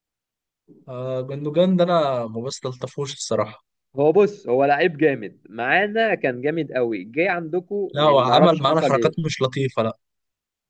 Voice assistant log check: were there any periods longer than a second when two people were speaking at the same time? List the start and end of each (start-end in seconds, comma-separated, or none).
7.9-9.3